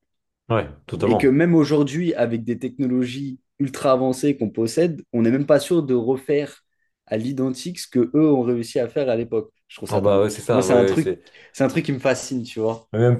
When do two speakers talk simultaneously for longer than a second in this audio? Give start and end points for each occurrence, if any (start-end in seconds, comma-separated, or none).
9.9-11.2